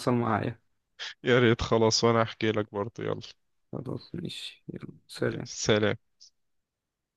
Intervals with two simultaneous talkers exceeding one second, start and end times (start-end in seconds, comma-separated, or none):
none